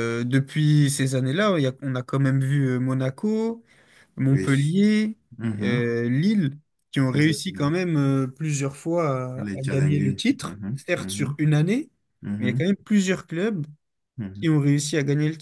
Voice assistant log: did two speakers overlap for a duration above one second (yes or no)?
yes